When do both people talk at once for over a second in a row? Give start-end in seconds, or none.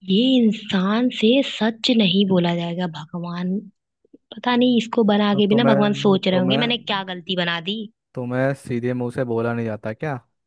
5.3-7.0